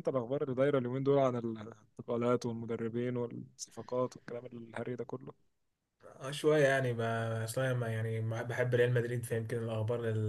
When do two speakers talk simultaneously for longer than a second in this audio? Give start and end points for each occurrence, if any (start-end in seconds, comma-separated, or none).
none